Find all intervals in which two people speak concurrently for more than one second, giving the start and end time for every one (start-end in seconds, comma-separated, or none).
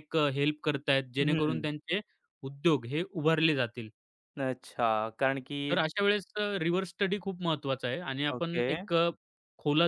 none